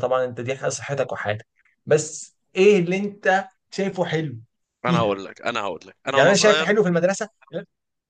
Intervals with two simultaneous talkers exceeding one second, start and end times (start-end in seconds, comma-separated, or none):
none